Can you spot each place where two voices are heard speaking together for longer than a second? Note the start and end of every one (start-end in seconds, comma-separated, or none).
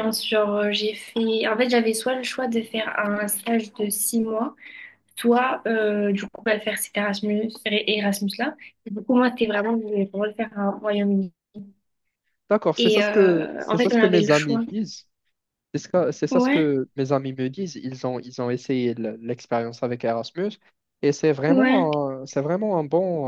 12.8-14.6